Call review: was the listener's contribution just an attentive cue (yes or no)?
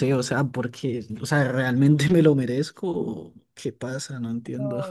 no